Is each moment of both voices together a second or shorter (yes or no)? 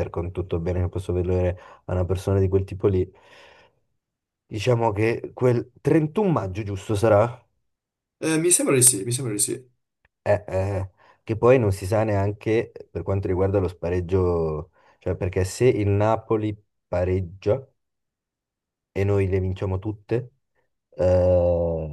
yes